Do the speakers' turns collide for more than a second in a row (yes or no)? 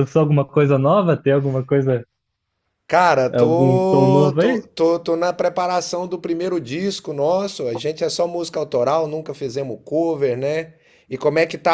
yes